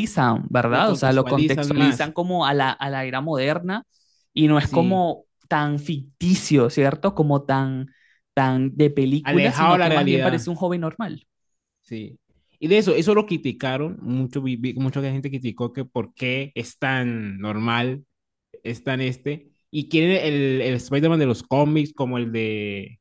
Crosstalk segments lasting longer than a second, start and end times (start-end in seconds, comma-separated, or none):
0.7-2.1, 9.2-10.4